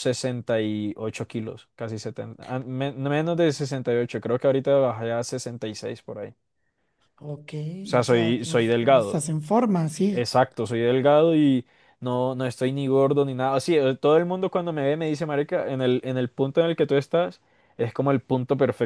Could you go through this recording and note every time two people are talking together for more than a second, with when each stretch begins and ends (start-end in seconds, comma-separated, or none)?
8.0-9.2